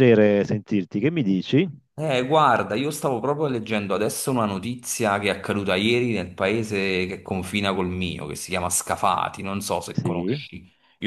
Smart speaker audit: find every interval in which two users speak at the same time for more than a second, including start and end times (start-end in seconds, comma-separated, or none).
none